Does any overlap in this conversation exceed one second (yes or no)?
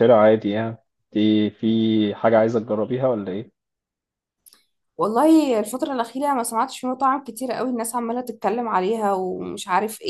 no